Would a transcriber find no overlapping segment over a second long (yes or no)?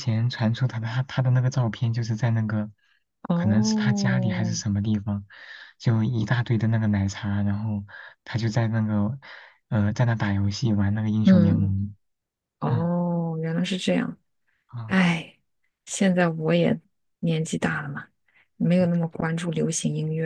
no